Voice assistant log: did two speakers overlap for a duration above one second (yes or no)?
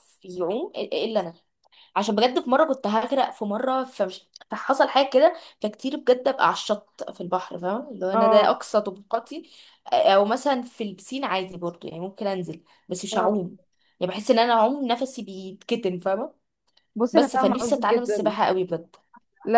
yes